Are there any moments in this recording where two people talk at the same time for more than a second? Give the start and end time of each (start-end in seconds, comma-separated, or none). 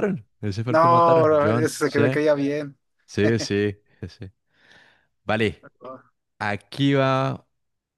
0.7-2.0